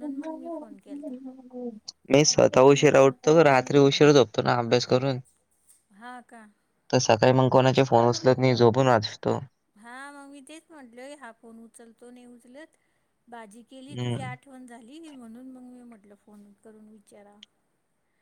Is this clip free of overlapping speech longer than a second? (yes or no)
yes